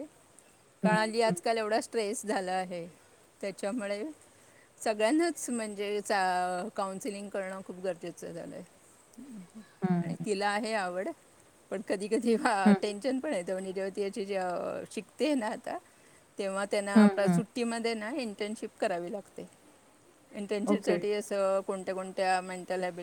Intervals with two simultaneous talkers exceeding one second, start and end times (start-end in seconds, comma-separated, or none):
none